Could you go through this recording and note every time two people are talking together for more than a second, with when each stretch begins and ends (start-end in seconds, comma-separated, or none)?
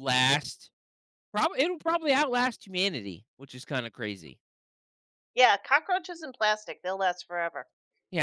none